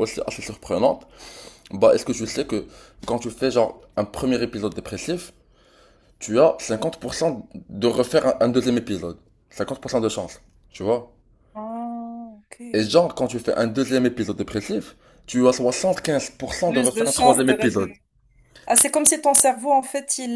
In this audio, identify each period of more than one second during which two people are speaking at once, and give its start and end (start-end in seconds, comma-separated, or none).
16.6-17.9